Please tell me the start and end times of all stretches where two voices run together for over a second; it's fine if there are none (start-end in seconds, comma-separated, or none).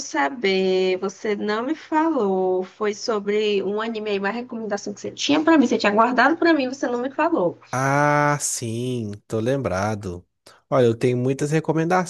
none